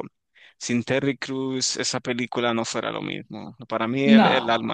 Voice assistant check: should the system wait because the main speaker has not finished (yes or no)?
yes